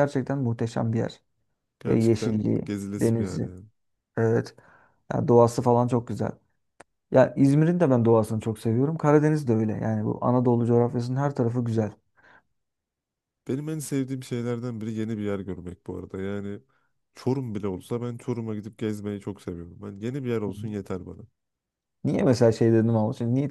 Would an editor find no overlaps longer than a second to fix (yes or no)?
no